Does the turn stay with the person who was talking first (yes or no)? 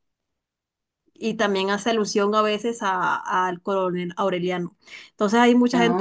yes